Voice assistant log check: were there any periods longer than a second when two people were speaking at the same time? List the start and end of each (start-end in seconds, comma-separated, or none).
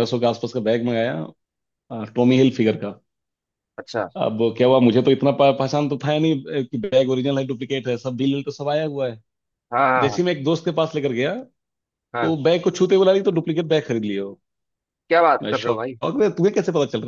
none